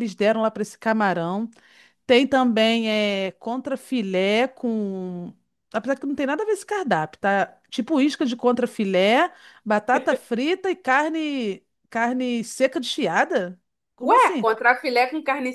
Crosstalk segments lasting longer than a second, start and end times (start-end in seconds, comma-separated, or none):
none